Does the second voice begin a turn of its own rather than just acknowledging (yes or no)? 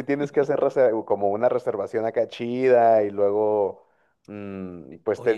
yes